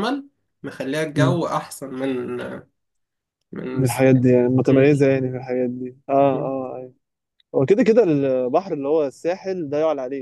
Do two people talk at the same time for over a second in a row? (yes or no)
no